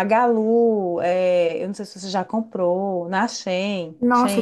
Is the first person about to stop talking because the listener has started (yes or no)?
yes